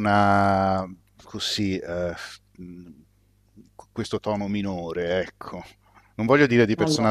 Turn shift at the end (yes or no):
no